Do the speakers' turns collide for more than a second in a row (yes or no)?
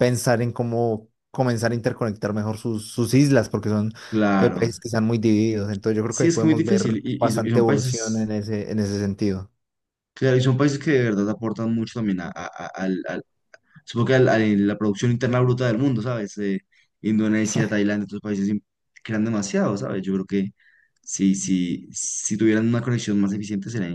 yes